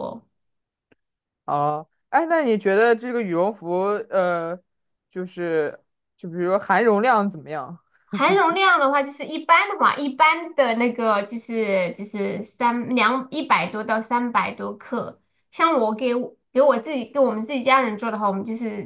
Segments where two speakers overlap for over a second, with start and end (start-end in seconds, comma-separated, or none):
none